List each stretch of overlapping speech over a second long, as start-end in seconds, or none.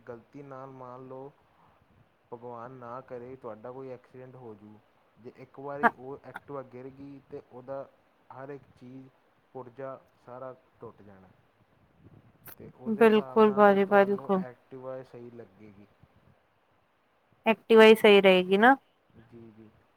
12.9-14.4